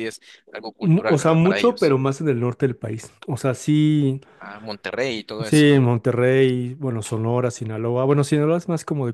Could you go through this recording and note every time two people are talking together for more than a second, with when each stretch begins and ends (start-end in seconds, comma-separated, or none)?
0.8-2.0